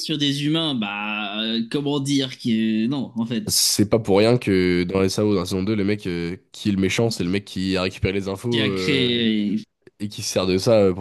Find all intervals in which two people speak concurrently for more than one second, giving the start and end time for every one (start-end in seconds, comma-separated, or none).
none